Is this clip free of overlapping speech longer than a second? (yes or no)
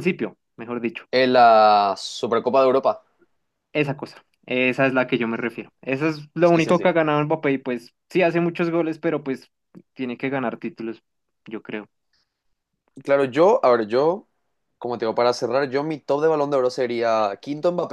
yes